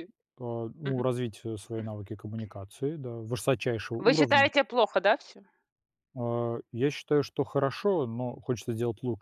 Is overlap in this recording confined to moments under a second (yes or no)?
yes